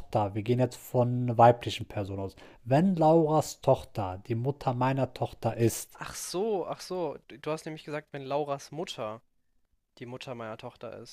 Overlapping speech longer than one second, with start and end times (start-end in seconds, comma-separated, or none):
none